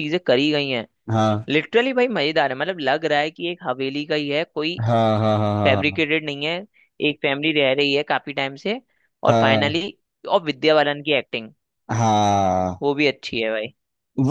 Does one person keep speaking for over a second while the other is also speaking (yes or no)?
no